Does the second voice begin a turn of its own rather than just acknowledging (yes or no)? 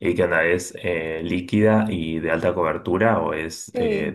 yes